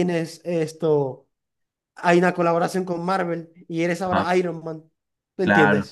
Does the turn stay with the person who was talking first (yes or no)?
no